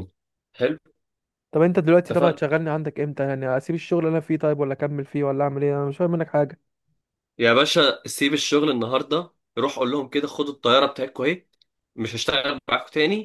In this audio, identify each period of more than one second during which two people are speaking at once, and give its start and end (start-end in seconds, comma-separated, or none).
none